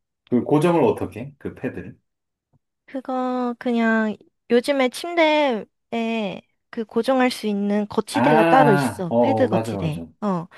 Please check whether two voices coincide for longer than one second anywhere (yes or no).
yes